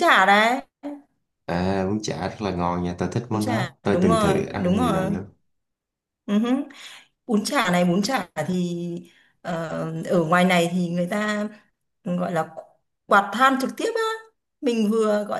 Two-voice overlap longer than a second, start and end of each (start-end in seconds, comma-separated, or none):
3.3-5.1